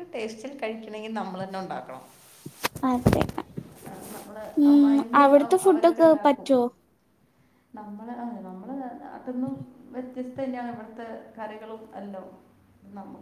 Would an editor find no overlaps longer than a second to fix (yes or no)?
no